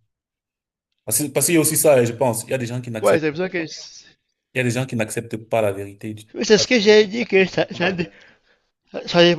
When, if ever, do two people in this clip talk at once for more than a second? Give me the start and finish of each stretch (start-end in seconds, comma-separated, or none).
none